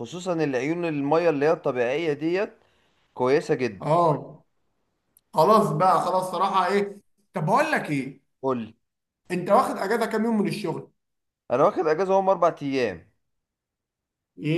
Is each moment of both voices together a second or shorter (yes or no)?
yes